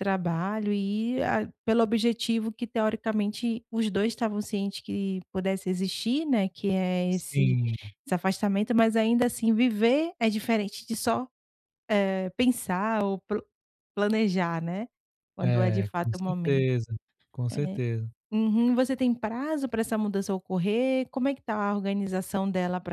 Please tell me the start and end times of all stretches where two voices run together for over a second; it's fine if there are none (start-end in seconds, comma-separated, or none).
15.4-16.6